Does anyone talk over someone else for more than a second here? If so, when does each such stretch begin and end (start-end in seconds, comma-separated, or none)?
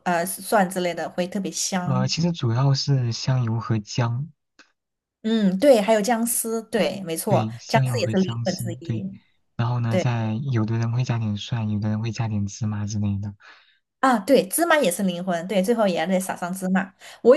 7.3-9.0